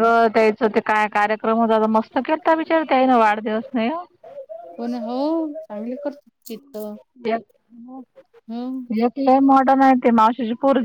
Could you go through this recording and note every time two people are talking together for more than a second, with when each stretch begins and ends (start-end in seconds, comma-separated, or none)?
none